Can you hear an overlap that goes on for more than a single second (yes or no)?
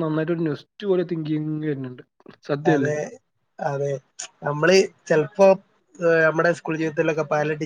no